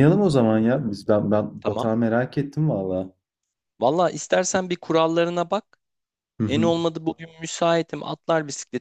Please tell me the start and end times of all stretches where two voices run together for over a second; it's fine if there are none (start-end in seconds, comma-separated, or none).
none